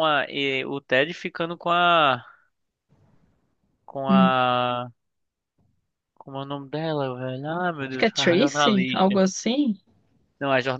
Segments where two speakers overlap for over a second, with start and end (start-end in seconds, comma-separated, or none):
7.9-9.2